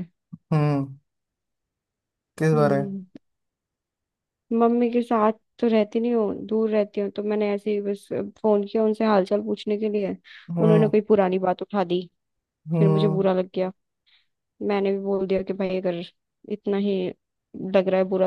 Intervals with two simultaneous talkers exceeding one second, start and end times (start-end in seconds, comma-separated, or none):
none